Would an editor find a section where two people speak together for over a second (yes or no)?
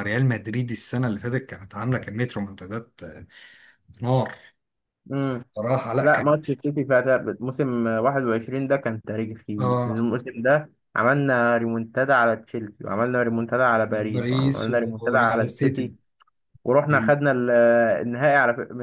yes